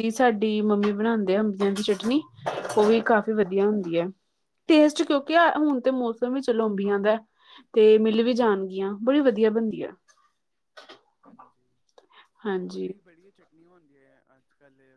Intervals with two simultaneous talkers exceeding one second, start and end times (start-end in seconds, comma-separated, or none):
none